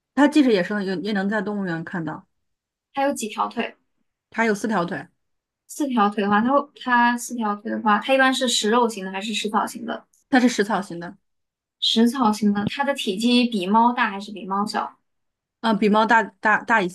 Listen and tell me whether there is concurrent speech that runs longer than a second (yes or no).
no